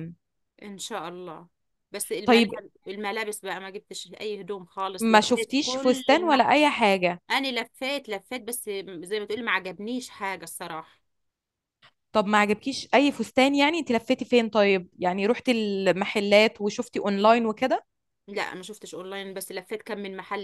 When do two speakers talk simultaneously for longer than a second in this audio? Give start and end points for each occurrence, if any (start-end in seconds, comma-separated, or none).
5.0-6.5